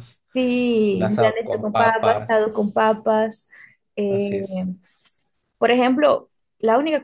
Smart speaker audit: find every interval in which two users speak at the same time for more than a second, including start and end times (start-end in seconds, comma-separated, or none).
0.9-2.4